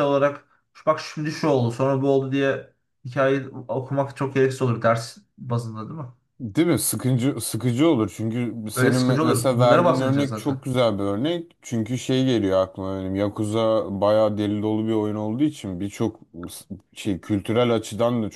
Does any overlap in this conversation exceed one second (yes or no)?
yes